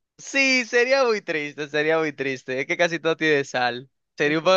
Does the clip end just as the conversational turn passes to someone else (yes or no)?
no